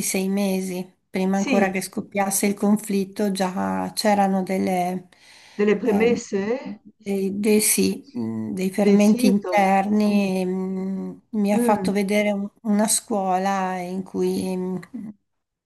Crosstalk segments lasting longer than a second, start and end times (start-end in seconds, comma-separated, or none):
8.8-10.2